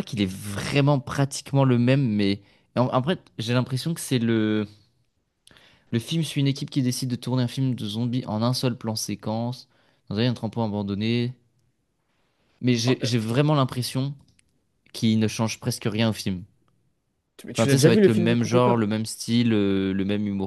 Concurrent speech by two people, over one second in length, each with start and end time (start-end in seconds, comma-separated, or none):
17.6-18.8